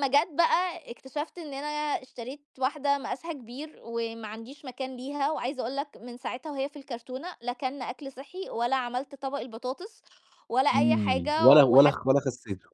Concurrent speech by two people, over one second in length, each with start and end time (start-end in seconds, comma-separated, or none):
10.7-11.9